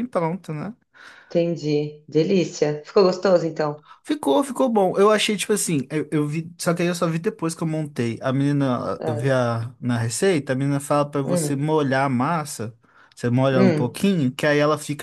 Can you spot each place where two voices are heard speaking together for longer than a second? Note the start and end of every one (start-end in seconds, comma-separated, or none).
none